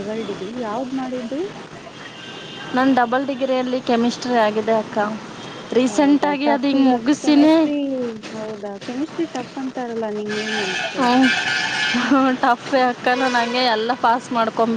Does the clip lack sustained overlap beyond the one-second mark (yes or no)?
no